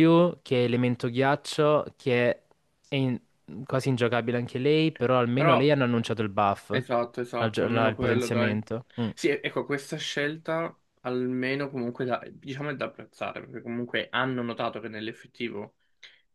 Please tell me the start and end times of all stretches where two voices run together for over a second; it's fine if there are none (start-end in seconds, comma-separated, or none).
7.4-8.6